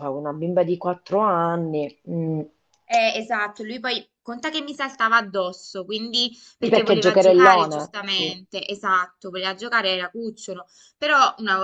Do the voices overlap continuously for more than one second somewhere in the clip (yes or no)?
yes